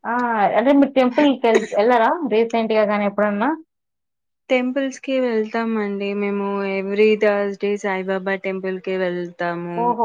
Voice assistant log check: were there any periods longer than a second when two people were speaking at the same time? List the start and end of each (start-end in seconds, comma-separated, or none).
none